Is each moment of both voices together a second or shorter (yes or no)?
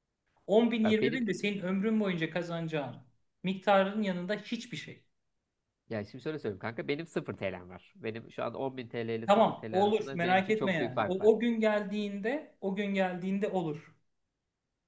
no